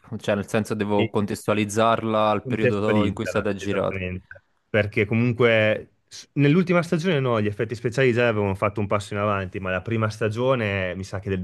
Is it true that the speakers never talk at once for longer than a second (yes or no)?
no